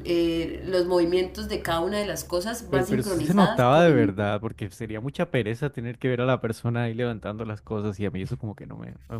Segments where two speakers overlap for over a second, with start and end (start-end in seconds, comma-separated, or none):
2.7-4.1